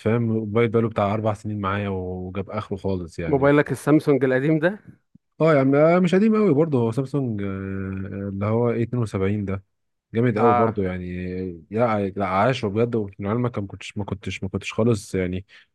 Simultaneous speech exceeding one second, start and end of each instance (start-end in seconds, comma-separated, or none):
none